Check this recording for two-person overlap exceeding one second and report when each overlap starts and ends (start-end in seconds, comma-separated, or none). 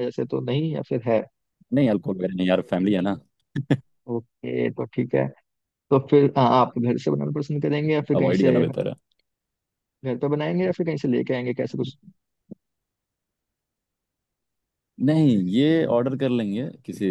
none